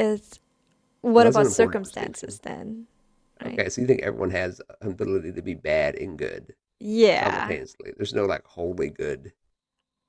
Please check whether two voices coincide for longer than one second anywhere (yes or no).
yes